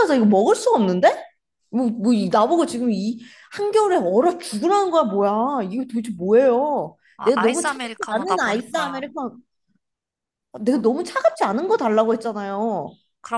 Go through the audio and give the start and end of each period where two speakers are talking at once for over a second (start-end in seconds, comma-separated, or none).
7.2-9.0